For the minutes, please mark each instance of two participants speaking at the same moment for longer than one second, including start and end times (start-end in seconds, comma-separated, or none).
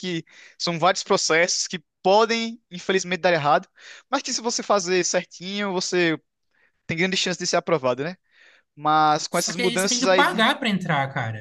9.3-10.5